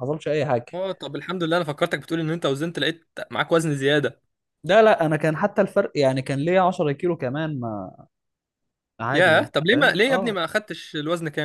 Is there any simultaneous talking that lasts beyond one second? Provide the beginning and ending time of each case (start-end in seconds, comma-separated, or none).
9.1-10.4